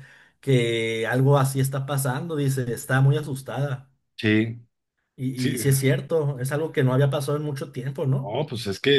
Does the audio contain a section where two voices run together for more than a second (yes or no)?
no